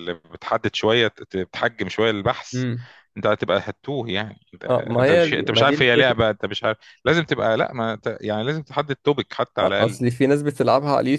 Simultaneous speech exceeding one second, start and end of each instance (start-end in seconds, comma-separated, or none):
4.7-6.2